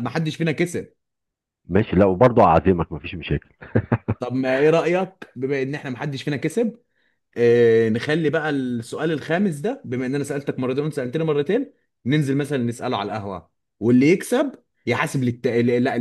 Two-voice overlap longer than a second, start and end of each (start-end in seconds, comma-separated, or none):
none